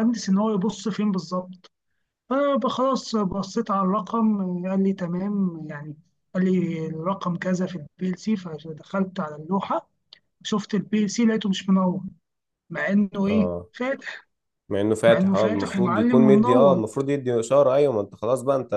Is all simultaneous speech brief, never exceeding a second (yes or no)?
no